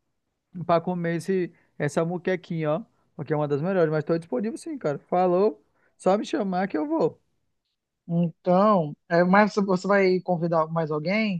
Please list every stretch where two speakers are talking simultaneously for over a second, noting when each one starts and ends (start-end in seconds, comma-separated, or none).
none